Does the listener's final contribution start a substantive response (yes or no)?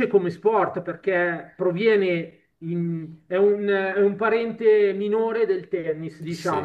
yes